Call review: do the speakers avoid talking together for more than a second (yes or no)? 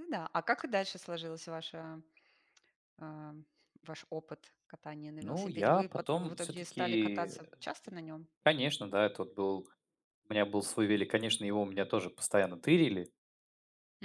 no